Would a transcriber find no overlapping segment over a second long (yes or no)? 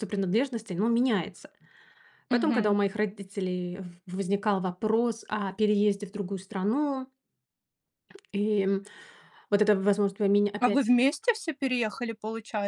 yes